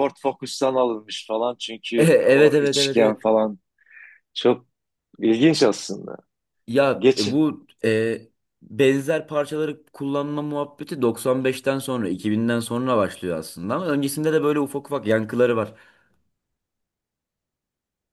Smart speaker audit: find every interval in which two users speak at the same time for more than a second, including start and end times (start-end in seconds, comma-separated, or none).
2.0-3.2